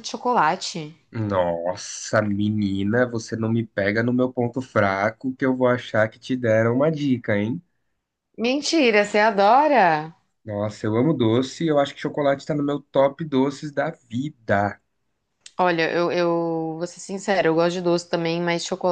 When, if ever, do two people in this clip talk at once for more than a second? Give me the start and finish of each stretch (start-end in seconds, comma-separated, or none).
none